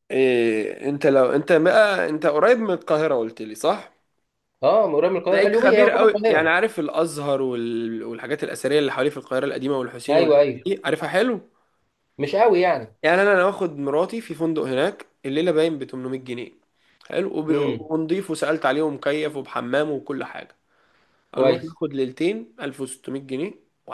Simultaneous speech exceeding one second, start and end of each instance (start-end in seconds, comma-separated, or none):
5.3-6.5